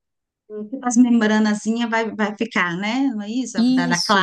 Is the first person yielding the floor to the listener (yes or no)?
yes